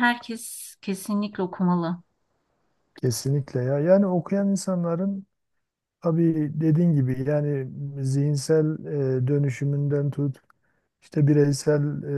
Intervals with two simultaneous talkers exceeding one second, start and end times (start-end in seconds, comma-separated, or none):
none